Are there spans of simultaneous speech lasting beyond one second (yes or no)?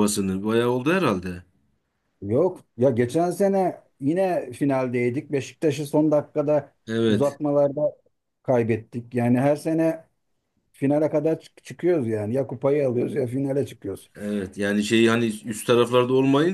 no